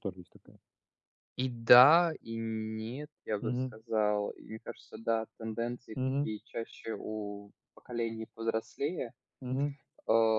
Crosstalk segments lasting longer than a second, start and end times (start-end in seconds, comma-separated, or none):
none